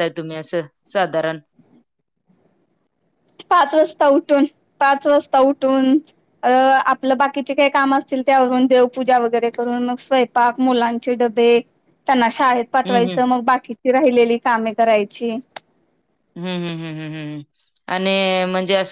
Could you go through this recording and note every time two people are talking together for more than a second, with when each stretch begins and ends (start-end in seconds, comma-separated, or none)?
none